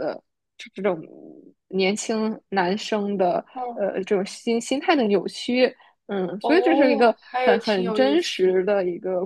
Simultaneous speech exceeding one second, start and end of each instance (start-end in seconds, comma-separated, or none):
6.4-8.5